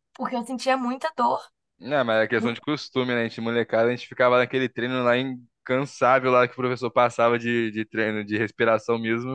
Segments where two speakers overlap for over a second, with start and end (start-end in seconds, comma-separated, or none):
none